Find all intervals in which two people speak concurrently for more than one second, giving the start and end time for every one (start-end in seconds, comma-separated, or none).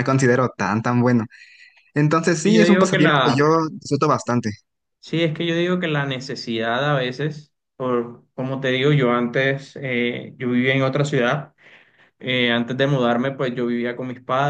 2.2-3.5